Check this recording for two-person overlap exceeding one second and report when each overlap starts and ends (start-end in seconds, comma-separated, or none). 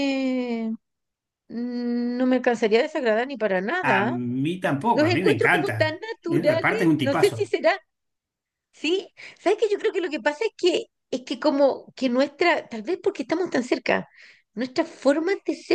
4.9-7.5